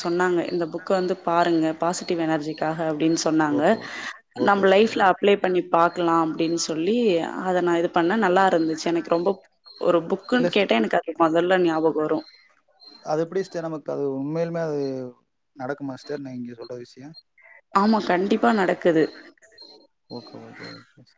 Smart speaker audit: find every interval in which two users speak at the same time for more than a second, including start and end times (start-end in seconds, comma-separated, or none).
none